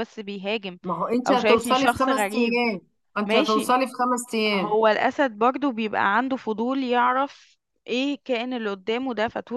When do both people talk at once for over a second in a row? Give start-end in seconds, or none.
1.3-2.6